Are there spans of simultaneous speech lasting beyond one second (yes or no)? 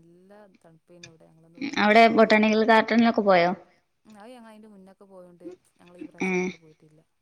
no